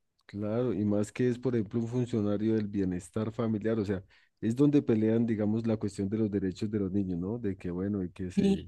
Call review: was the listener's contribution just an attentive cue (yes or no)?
yes